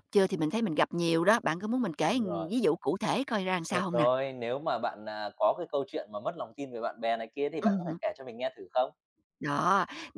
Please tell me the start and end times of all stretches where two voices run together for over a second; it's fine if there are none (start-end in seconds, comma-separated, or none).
none